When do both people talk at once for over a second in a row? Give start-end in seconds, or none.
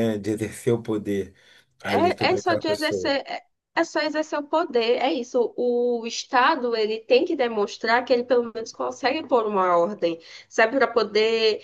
1.8-3.2